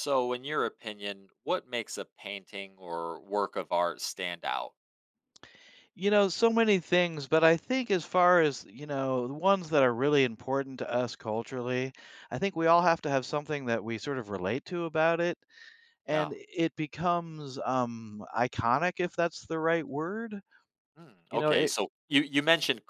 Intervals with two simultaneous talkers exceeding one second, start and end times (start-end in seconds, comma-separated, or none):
none